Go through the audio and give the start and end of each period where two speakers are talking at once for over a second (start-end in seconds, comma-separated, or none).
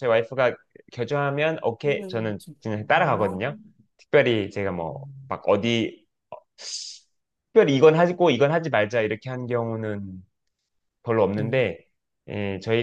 1.8-3.4